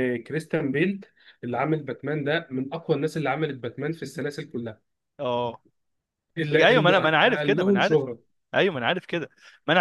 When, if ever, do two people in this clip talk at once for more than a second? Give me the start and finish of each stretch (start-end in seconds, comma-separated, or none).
6.5-8.1